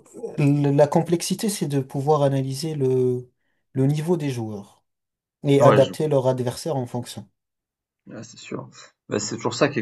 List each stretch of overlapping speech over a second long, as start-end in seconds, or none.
none